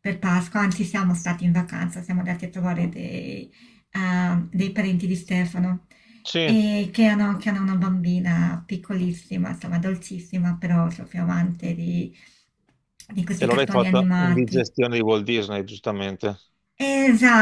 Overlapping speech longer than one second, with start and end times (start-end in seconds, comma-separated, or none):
13.4-14.7